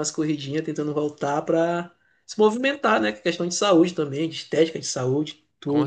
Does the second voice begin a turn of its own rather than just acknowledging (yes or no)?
yes